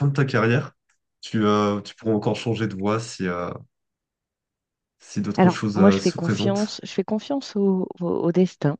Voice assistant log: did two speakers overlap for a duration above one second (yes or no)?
yes